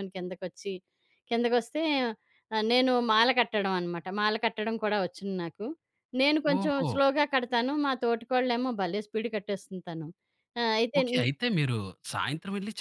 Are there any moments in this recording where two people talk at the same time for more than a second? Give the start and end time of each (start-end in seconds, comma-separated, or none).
none